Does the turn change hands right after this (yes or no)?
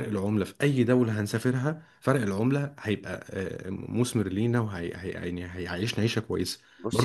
yes